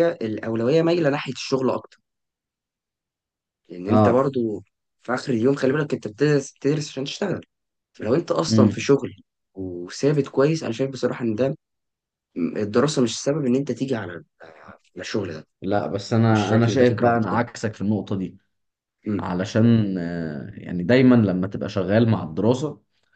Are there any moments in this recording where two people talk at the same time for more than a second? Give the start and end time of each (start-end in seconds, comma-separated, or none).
16.3-17.6